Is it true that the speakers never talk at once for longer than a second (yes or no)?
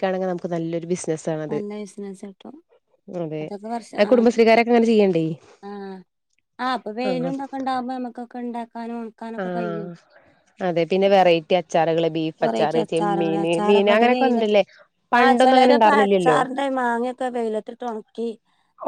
no